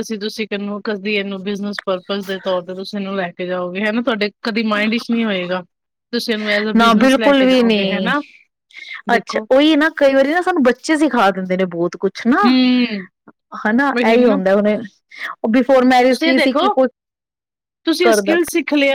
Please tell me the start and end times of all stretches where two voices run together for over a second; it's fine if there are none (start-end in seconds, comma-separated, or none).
6.8-8.1